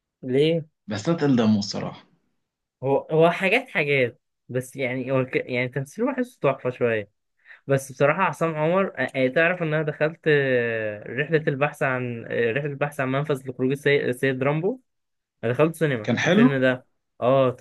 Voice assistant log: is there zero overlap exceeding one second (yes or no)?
yes